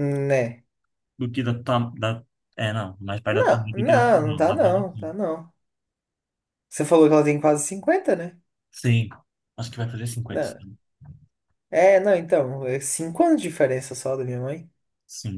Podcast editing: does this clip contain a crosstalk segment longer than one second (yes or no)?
yes